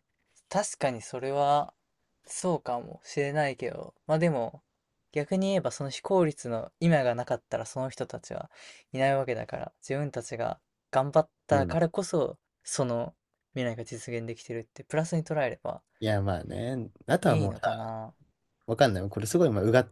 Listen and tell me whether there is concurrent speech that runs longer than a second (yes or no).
no